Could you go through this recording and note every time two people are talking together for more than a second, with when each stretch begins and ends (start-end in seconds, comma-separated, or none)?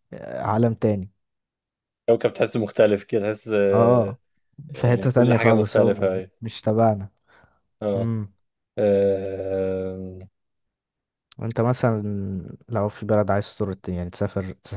4.8-6.3